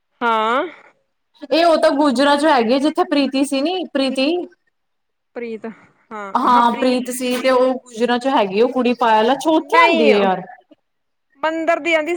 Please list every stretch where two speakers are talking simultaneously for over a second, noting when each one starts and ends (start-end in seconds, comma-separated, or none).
none